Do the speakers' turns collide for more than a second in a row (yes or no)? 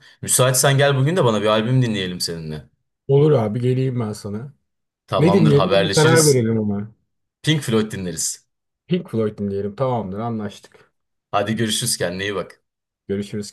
yes